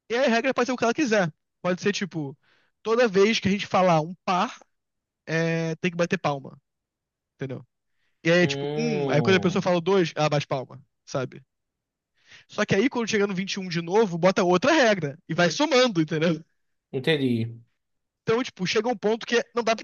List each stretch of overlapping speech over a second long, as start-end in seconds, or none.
8.4-9.7